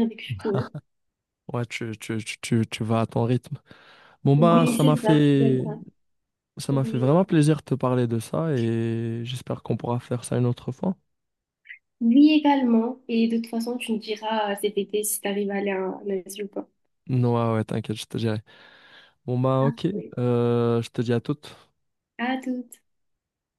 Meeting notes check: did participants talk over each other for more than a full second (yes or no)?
yes